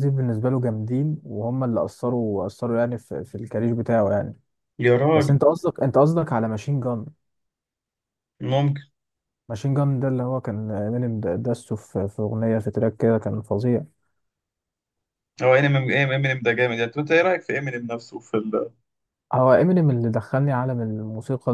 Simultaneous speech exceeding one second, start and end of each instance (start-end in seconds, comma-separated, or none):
none